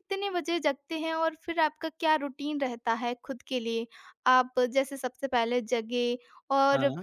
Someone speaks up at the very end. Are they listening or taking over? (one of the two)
listening